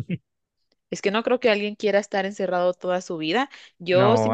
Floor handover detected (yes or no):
yes